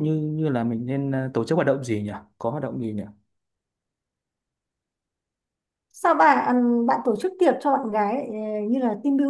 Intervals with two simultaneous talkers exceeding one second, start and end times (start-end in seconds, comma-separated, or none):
none